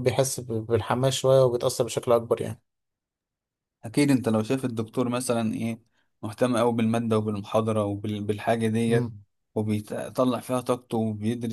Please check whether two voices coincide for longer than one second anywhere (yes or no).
no